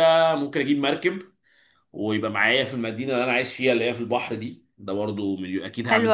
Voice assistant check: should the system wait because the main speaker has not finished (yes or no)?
no